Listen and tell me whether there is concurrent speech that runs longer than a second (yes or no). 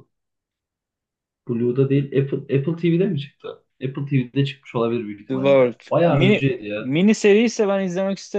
yes